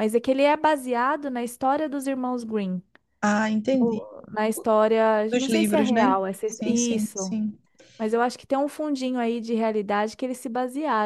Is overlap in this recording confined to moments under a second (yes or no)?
no